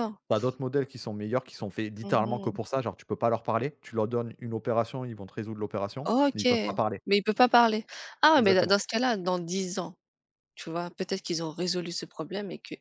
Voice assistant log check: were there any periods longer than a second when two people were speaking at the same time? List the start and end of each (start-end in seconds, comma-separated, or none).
none